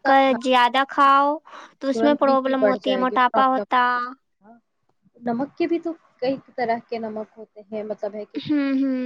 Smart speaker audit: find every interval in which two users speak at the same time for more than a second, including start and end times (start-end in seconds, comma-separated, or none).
1.9-3.8